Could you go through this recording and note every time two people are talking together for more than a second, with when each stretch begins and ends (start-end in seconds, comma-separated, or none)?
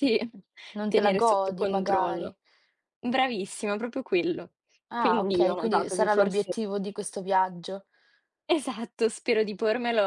0.9-2.3, 5.0-6.5